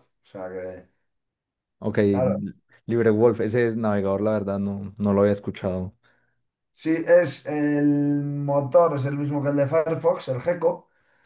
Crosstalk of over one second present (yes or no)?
no